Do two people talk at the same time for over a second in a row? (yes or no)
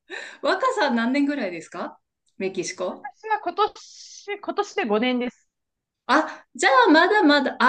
no